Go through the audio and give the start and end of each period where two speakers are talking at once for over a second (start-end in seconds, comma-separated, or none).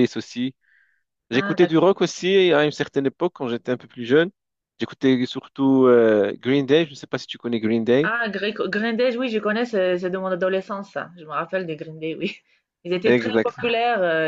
none